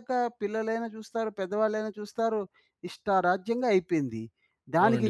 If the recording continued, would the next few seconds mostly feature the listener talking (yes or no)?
yes